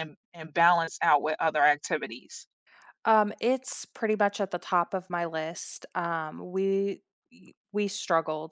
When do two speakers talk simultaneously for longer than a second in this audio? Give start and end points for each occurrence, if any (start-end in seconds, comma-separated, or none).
none